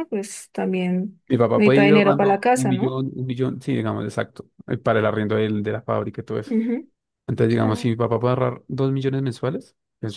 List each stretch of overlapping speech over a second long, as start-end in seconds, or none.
1.3-3.0